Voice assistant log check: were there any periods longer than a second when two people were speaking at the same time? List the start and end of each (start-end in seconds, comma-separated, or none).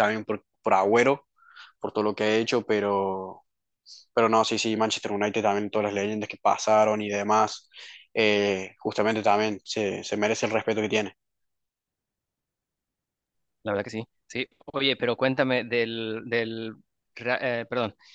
none